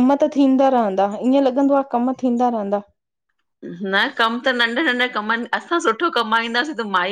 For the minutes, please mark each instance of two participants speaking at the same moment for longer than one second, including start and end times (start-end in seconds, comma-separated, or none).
none